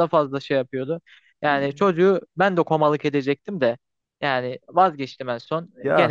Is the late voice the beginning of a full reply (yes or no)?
no